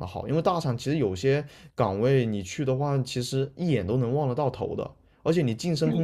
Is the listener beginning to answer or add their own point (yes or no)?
no